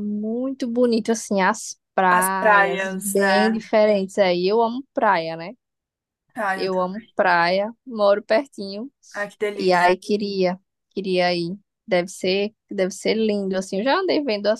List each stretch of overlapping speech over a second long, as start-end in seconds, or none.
2.1-3.6